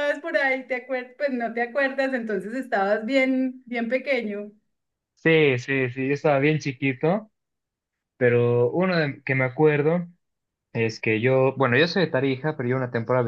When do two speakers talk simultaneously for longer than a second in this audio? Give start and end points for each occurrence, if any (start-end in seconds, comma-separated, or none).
none